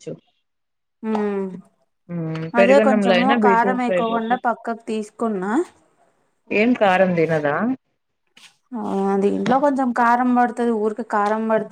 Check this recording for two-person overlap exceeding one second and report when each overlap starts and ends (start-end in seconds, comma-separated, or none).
2.6-4.4